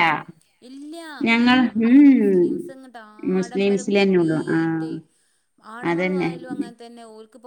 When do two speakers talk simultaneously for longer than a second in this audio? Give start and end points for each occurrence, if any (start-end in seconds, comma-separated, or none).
3.4-4.9